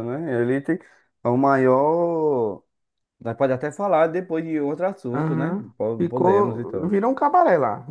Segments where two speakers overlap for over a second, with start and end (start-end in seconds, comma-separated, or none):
5.1-6.9